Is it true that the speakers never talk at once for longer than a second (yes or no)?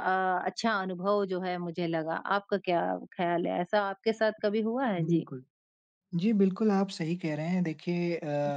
yes